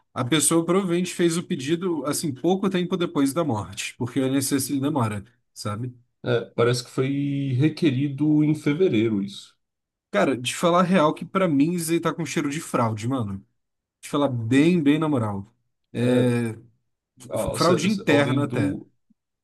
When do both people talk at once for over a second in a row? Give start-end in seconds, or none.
17.3-18.8